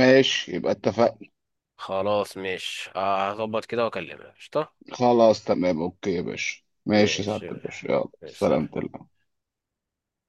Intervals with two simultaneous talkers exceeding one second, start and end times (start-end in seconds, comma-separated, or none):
6.9-8.9